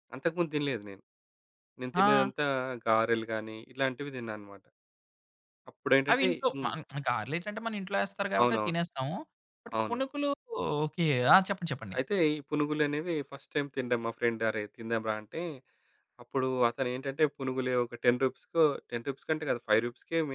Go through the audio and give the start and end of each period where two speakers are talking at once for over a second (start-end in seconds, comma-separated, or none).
none